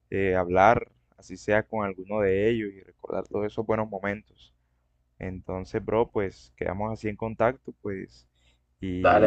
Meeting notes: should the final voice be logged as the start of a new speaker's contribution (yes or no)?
yes